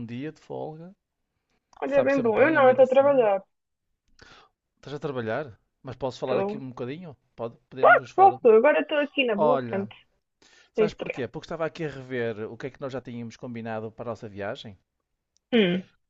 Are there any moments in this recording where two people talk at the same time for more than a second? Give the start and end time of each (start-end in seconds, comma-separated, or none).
1.9-3.3